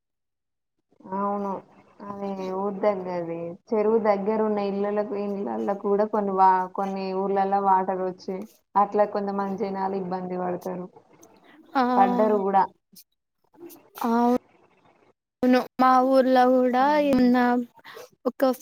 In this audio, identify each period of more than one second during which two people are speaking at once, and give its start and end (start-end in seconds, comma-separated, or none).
none